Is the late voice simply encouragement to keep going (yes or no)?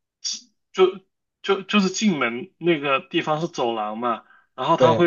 yes